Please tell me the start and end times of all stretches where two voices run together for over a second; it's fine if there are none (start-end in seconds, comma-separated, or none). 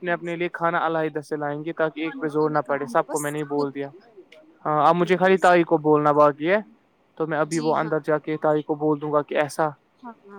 2.0-3.9